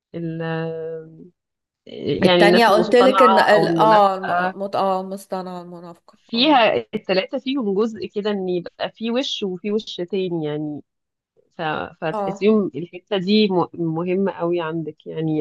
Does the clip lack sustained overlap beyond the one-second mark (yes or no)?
no